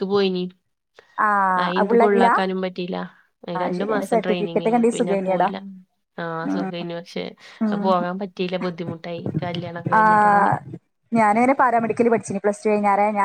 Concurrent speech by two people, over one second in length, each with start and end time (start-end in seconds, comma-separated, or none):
3.6-5.5